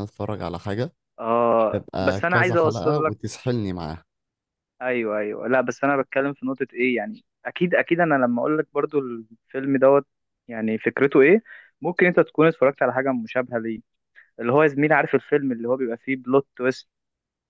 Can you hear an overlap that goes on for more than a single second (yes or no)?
yes